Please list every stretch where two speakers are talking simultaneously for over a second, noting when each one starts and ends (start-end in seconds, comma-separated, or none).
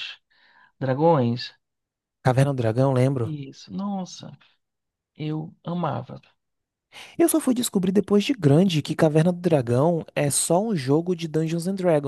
none